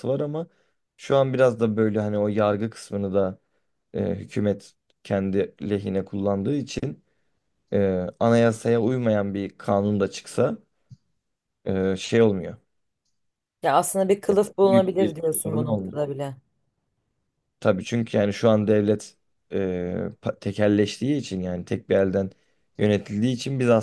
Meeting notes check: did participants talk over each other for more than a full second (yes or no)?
yes